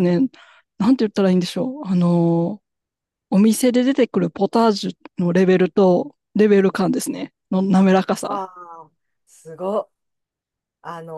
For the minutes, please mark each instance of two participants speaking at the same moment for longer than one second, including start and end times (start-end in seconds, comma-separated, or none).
none